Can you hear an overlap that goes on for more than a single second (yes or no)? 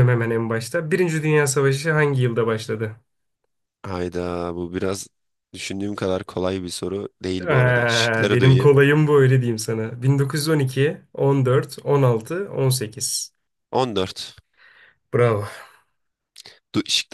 yes